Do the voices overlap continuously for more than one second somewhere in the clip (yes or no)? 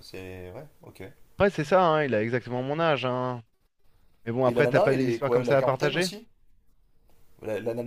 yes